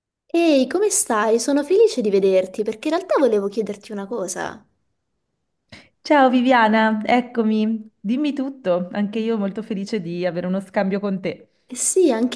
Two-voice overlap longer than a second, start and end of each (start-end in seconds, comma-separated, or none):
none